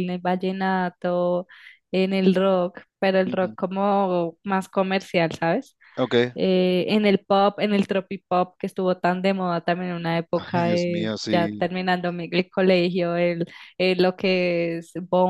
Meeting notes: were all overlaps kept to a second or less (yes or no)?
no